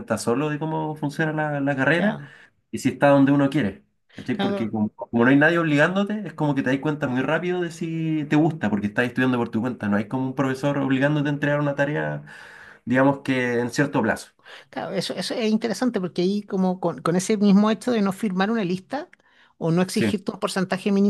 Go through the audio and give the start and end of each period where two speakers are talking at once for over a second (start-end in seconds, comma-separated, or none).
none